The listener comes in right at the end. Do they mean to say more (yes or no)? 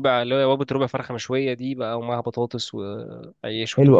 yes